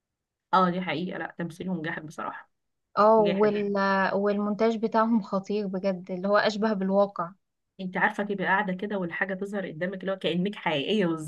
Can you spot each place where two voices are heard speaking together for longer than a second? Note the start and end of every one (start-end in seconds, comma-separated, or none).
none